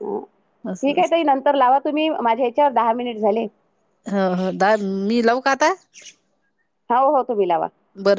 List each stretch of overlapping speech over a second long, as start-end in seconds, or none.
none